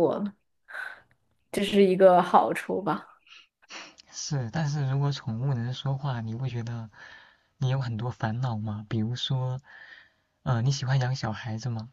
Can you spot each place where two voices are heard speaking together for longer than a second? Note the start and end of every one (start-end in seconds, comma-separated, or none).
none